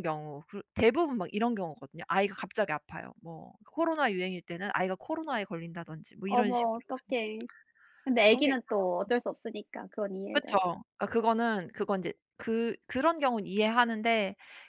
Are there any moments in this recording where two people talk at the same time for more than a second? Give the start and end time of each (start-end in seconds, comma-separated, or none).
none